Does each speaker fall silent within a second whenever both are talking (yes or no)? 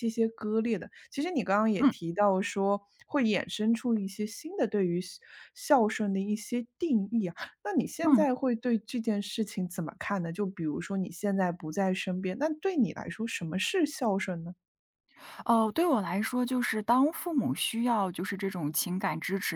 yes